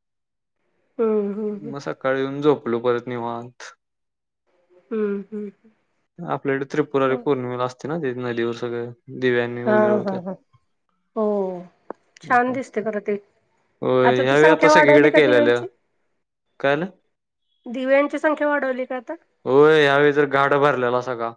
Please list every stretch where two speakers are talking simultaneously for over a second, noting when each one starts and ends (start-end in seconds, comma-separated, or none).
14.3-15.6